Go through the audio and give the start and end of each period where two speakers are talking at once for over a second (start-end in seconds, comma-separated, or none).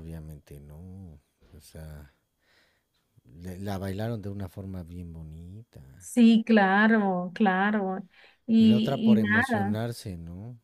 8.6-9.8